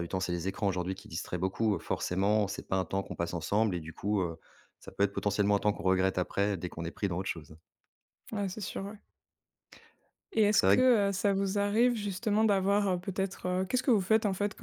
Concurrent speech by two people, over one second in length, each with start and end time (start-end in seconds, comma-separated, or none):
none